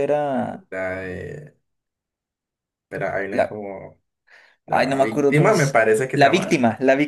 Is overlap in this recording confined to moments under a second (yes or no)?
no